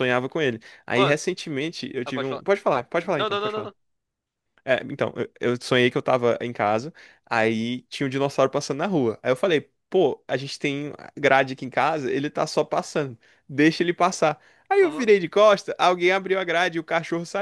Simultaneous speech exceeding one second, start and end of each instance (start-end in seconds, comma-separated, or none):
none